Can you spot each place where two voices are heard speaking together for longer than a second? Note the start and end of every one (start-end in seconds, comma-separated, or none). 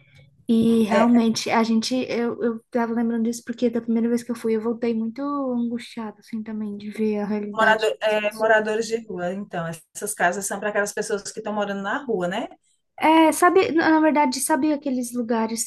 7.5-8.8